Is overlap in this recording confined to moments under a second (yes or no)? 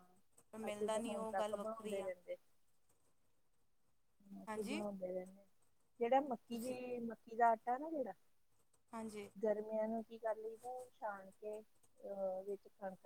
no